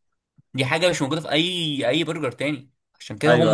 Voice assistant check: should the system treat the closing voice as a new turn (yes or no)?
yes